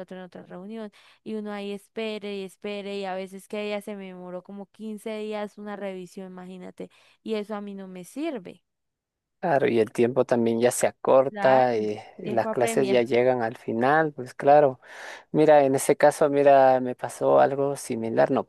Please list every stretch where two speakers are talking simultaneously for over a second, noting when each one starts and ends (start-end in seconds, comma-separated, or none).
11.3-13.1